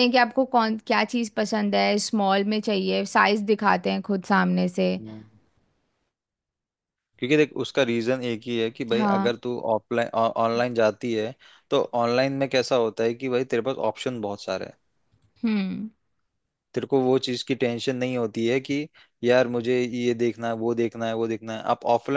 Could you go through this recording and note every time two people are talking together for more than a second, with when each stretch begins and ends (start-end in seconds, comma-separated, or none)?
none